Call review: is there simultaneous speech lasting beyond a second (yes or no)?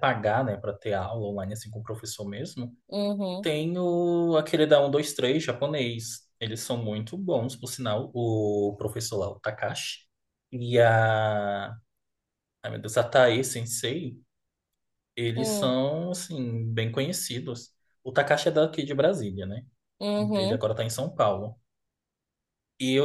no